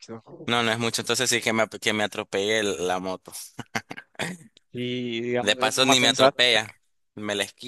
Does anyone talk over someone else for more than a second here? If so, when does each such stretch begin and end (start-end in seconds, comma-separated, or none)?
5.4-6.7